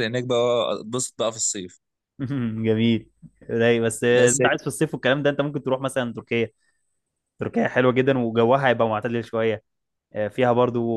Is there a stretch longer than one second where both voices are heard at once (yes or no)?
no